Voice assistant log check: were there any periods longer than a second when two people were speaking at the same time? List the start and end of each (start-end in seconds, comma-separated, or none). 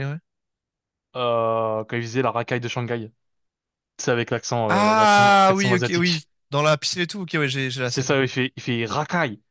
4.7-6.2